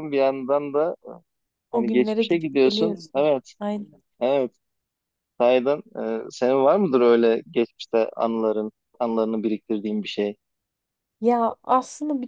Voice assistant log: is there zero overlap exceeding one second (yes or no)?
no